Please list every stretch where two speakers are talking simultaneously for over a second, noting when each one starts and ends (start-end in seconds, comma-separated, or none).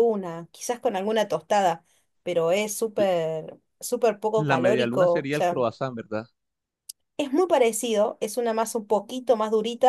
4.4-5.6